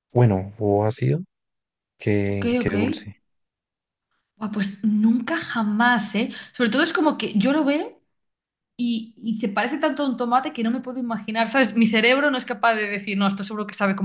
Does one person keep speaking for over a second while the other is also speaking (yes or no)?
no